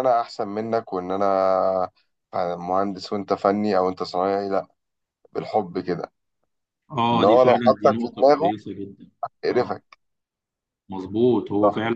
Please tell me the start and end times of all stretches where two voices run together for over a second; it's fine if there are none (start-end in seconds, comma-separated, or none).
7.1-8.5